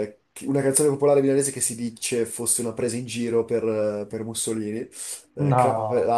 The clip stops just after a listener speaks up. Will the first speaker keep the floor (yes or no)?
yes